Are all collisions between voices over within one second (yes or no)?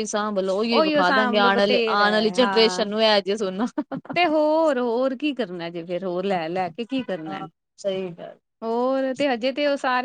no